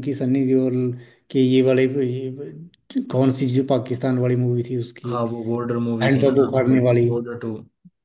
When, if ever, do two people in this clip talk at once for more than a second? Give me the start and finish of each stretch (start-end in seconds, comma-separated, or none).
none